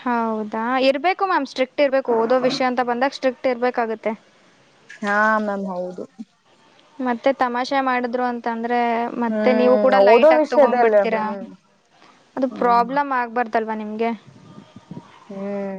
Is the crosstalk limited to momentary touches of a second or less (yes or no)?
no